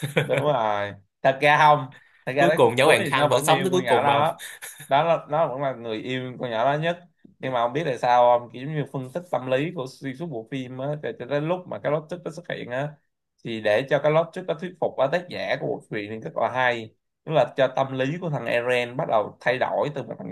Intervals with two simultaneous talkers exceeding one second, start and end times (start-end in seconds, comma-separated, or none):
2.4-4.2